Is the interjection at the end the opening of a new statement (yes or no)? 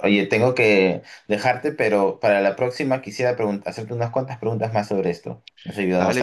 yes